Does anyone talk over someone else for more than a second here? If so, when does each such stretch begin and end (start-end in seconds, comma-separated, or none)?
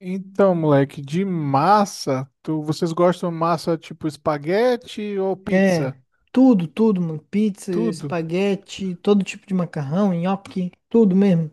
none